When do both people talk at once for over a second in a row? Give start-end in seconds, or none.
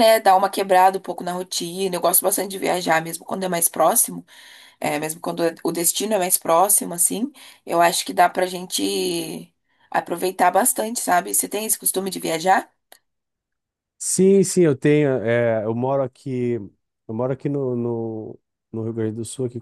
none